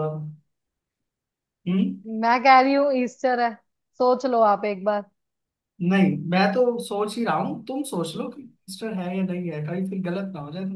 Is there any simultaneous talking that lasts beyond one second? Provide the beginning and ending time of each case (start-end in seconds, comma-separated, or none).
none